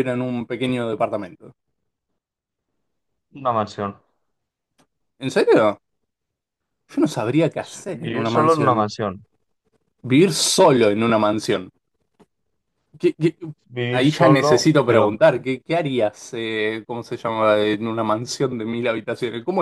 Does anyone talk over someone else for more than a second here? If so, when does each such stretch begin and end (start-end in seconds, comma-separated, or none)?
7.6-8.9, 13.9-15.1